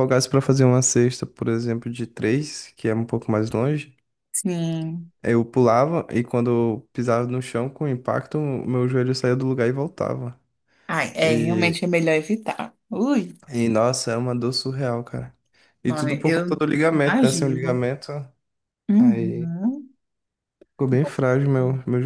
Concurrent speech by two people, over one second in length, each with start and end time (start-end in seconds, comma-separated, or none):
15.9-17.9